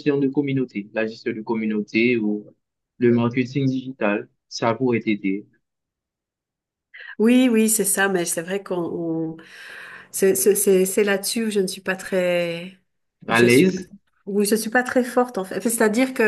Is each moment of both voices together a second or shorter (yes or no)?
yes